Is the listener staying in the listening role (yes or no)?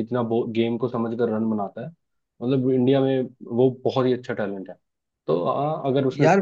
yes